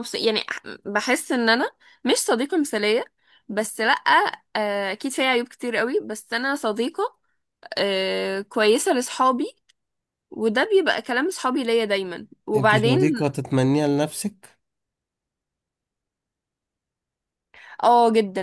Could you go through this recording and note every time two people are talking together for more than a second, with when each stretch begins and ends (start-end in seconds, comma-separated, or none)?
none